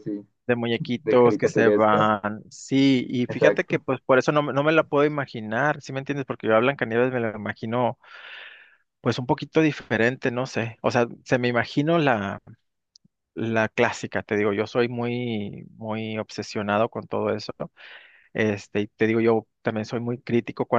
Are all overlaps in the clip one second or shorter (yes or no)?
no